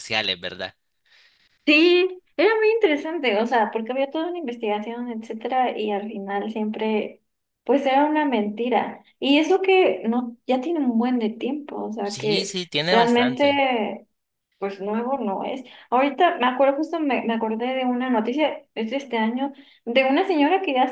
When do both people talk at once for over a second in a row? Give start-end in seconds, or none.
12.0-13.6